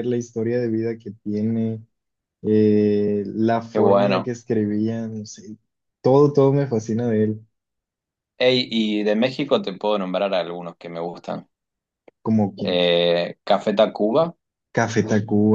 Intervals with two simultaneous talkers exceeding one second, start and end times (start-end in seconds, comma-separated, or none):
none